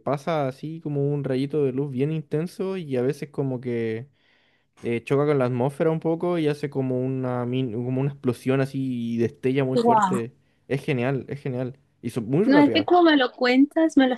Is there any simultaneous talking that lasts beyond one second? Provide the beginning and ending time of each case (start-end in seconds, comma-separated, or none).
none